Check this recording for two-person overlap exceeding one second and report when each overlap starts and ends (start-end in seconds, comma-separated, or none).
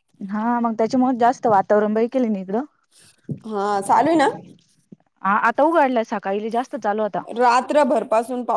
none